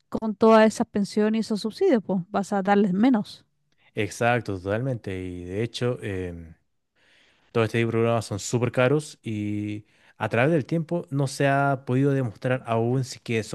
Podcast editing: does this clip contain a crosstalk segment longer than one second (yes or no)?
no